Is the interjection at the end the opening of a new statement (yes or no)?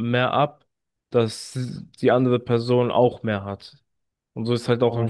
yes